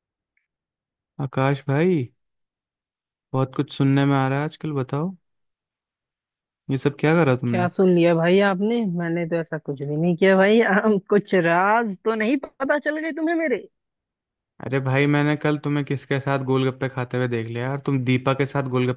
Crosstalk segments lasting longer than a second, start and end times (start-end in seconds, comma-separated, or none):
none